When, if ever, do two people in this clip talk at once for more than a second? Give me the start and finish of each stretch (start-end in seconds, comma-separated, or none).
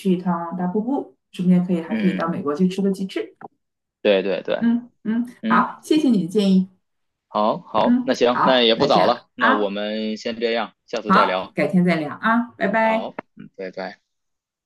7.8-9.7